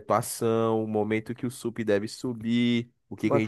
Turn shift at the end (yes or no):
no